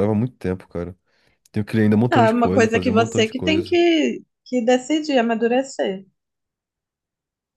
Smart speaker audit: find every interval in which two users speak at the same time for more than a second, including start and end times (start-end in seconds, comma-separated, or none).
2.1-3.8